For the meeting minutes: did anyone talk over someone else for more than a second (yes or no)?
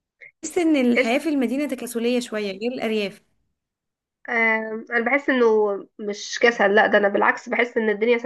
no